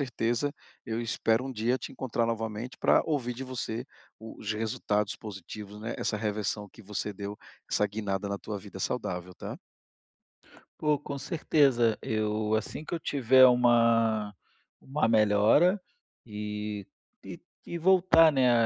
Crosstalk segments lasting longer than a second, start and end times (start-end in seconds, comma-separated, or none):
none